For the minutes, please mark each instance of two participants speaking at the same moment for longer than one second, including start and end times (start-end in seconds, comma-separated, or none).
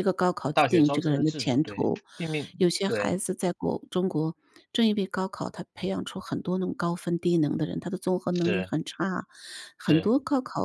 0.5-2.0